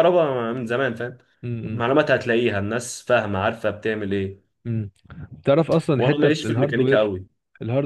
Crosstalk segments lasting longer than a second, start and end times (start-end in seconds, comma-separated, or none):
5.9-7.1